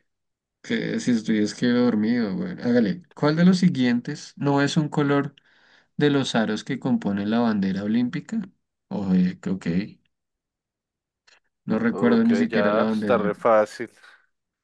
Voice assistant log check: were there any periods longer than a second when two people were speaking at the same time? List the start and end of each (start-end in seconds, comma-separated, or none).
11.9-13.4